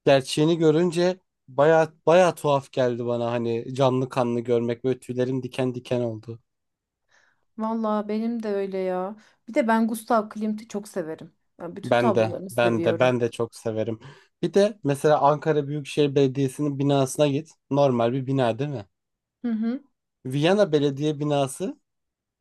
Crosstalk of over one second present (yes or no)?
yes